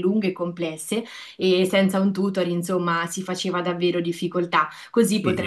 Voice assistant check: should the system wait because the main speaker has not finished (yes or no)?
no